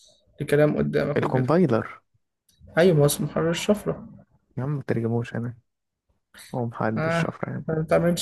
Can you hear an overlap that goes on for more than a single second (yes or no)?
no